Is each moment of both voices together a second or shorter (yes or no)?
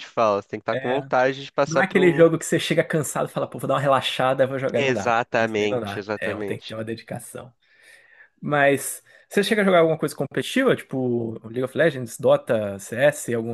no